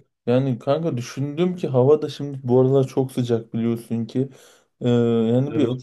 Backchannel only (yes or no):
yes